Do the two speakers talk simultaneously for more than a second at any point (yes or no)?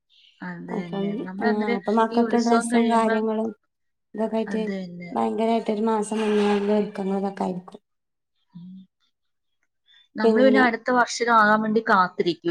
yes